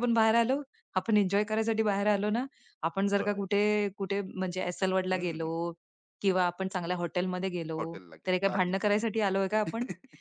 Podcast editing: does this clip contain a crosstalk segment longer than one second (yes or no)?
no